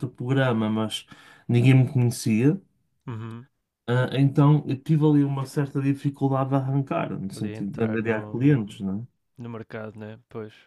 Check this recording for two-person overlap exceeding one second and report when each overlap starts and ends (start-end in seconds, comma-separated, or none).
7.3-8.8